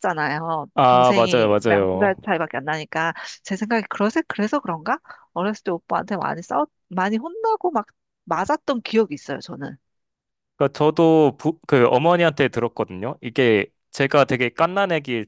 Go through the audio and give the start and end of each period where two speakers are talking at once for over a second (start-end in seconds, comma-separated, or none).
0.7-2.1